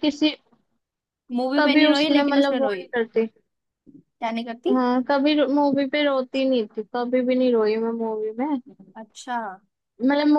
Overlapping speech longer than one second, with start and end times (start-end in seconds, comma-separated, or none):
1.6-2.9